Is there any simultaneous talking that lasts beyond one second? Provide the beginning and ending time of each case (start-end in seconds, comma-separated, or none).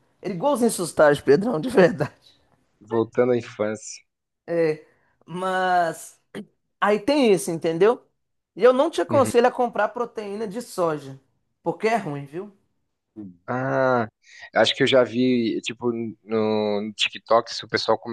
none